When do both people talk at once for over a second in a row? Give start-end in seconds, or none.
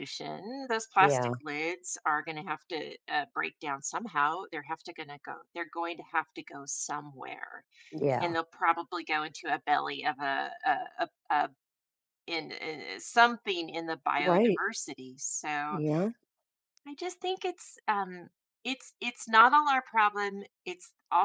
none